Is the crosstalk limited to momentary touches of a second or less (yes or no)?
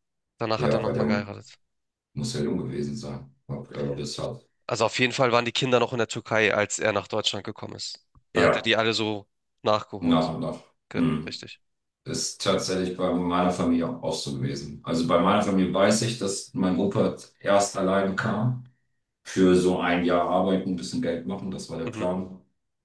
yes